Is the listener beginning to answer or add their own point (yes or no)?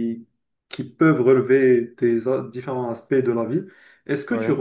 no